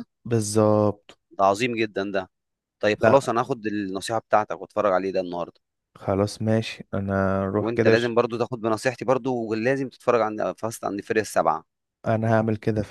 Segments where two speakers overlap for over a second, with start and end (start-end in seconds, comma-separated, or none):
none